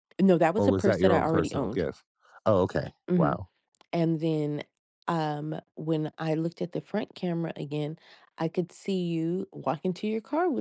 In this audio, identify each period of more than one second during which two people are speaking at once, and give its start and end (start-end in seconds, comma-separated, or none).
0.6-1.8